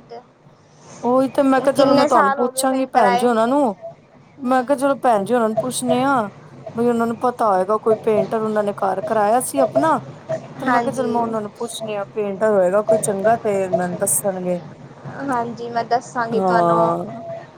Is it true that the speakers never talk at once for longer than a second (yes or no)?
no